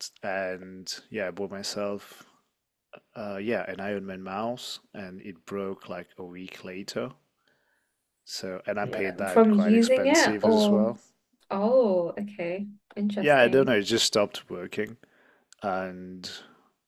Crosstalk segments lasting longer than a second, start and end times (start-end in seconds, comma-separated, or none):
9.3-10.9